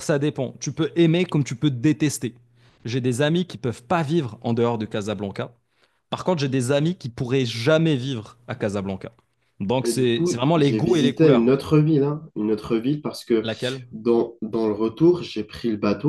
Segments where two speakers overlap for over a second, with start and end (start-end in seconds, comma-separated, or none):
9.8-11.5